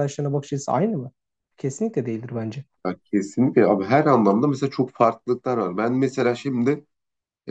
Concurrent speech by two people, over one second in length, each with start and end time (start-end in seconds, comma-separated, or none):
none